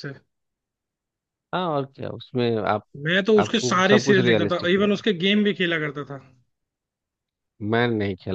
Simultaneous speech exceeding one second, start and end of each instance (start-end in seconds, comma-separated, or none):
3.4-5.0